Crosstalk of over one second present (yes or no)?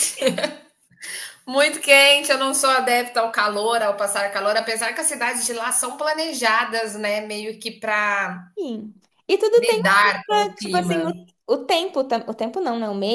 yes